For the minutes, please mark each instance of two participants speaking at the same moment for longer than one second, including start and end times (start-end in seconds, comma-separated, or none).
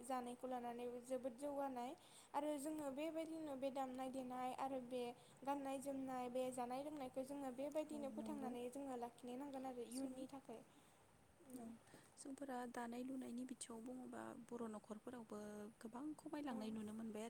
none